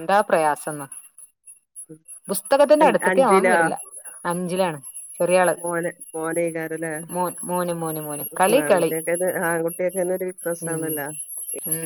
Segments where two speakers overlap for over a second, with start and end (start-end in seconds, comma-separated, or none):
none